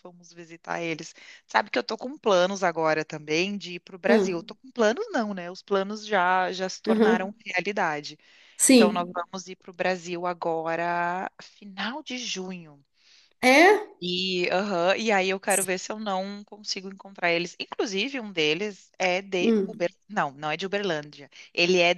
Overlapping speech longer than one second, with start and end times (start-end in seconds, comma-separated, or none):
none